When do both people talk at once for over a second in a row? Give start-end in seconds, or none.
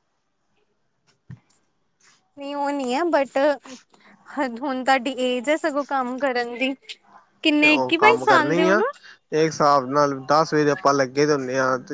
7.6-8.8